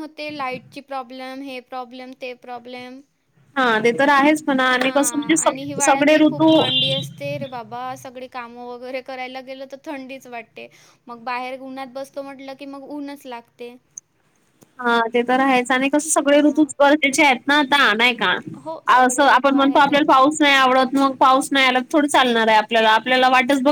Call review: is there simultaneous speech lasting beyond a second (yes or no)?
yes